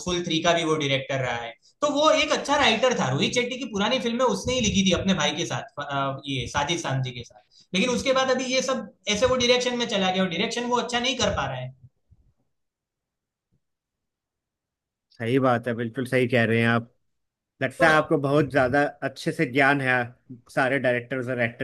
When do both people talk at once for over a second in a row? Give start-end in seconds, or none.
none